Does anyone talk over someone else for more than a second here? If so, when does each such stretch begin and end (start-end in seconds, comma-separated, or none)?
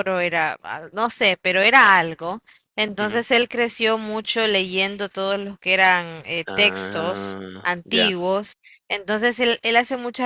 6.5-8.1